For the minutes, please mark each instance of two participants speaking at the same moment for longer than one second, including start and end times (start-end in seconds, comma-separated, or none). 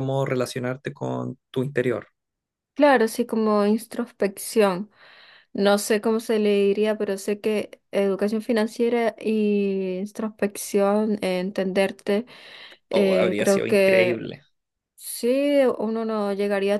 12.9-14.2